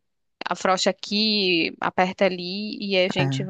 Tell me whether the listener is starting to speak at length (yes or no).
no